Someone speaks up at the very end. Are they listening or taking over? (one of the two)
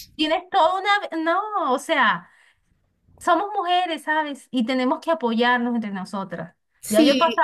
listening